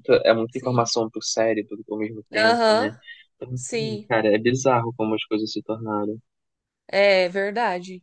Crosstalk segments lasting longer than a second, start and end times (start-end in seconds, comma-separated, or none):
none